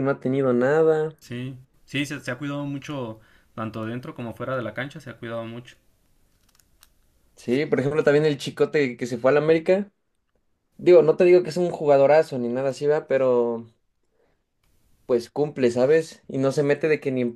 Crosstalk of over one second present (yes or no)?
no